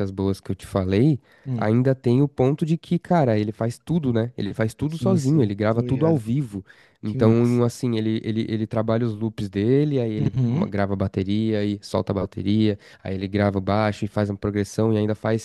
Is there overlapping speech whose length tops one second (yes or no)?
yes